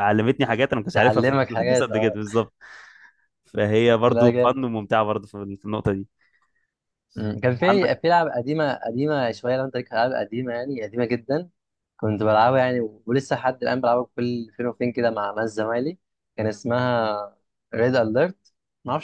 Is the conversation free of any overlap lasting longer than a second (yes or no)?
no